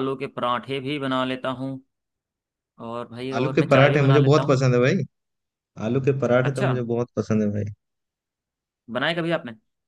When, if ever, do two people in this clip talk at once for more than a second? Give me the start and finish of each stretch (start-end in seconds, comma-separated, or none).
3.4-4.6